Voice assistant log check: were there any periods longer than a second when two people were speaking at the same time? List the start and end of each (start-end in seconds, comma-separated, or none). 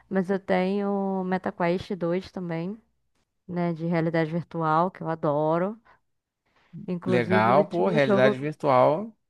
7.0-8.3